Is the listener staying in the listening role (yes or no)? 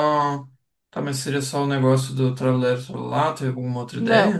no